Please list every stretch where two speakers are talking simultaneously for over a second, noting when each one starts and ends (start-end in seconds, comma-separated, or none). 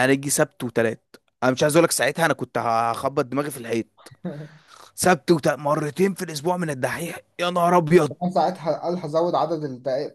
none